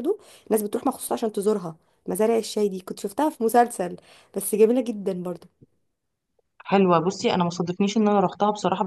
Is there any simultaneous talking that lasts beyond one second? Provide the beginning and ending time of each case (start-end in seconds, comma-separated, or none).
none